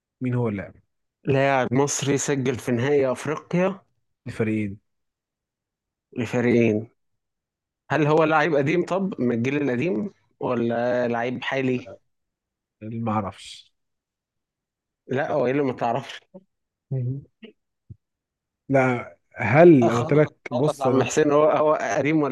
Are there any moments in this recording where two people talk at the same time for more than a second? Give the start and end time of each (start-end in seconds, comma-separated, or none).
19.8-21.2